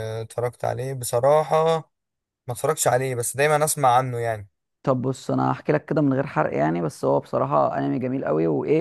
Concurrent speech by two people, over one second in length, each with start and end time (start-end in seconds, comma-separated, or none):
none